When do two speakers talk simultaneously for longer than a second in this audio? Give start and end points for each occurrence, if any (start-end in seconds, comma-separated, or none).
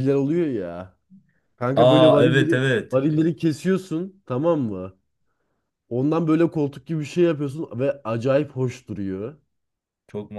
1.8-3.1